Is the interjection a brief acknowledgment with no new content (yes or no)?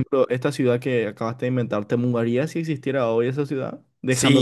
no